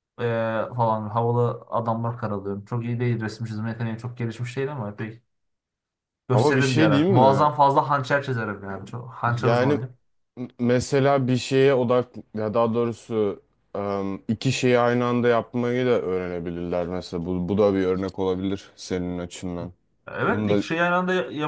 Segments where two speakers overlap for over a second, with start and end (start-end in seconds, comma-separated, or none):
6.3-7.5